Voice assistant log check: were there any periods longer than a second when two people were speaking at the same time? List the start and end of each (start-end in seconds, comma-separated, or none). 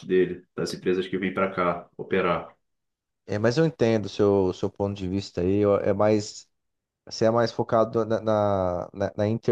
none